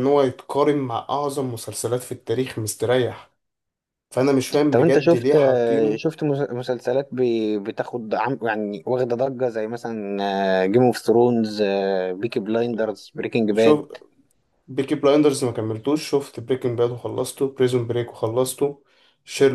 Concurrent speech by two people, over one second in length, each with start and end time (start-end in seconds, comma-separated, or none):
4.7-6.0